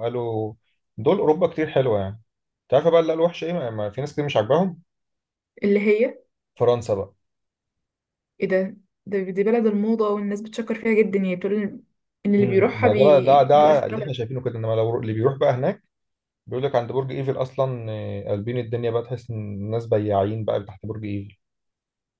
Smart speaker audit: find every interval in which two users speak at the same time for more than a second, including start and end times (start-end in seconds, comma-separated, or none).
12.4-14.1